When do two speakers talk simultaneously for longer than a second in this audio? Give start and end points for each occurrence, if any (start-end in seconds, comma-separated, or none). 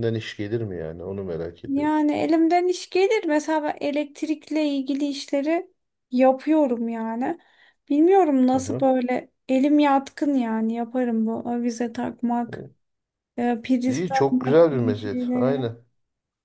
13.9-15.7